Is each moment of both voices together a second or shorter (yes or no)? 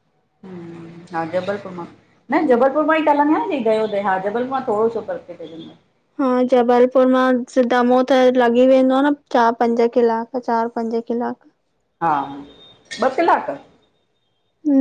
yes